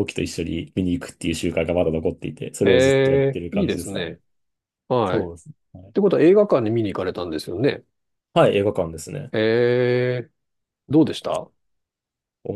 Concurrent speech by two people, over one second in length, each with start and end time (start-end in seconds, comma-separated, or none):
2.6-4.1